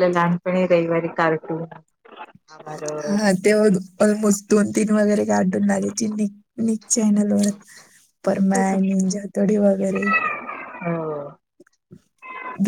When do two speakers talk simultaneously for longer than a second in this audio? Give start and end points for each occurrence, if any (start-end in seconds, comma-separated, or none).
none